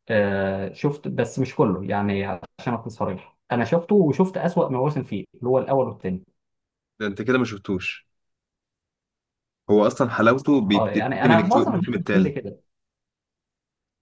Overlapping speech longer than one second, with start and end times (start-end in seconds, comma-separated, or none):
10.7-12.3